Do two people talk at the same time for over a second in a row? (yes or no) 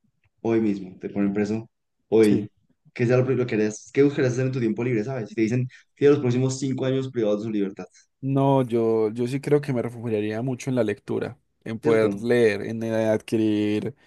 no